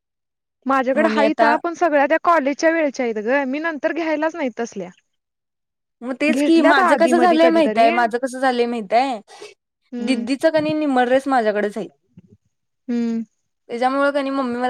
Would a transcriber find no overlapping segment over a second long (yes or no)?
no